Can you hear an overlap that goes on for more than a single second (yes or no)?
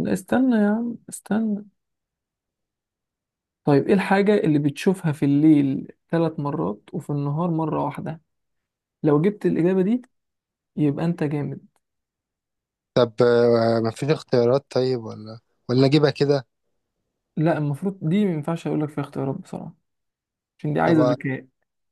no